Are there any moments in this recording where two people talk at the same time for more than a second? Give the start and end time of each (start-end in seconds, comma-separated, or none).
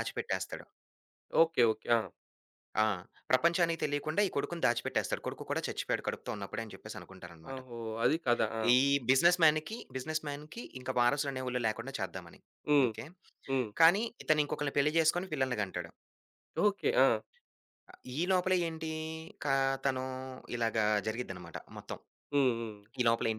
none